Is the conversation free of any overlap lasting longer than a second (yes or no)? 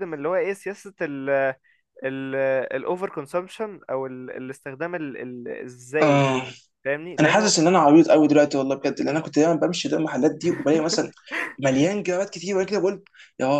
yes